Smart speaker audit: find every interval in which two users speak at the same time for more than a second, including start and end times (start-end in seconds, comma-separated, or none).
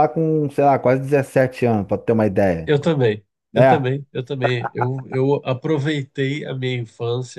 none